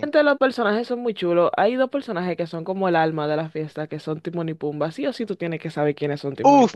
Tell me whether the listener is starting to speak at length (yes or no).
yes